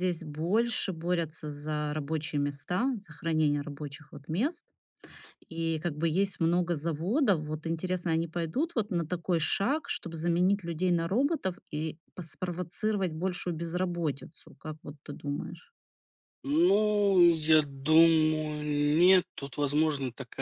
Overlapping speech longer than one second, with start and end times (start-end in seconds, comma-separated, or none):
none